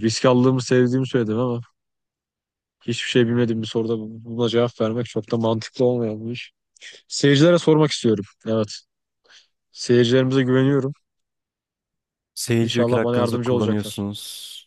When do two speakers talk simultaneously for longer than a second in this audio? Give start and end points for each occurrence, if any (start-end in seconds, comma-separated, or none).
12.6-14.0